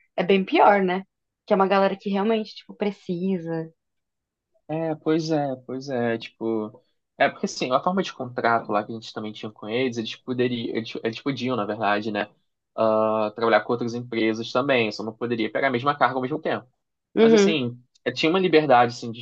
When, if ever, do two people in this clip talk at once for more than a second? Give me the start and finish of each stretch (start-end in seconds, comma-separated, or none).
none